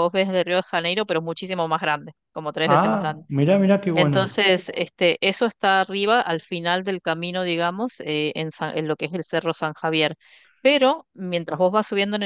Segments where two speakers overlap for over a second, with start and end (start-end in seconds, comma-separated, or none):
none